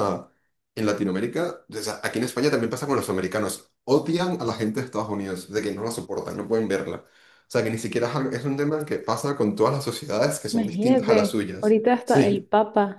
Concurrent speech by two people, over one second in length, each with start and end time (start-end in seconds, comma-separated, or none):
10.5-12.5